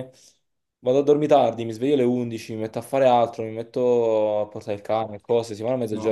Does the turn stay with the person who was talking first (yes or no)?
no